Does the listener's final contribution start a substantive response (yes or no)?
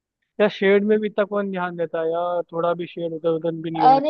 yes